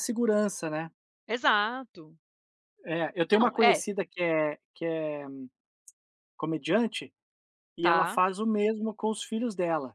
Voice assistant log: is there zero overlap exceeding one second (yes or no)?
yes